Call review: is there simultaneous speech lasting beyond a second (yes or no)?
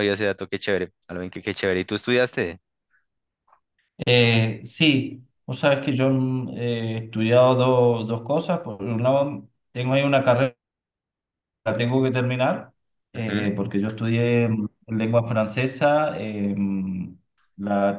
no